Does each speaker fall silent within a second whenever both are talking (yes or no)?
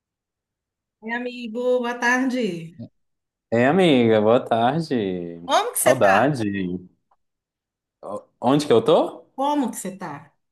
yes